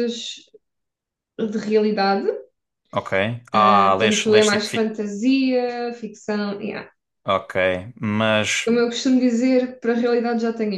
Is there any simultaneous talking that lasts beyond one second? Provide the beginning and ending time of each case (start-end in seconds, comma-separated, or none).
3.5-4.9